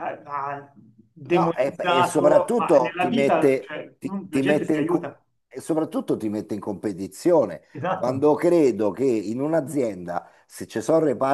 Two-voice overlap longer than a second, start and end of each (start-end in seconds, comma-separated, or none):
1.2-5.2